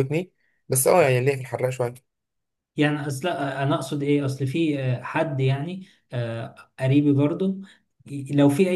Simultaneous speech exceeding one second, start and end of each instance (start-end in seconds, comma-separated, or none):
none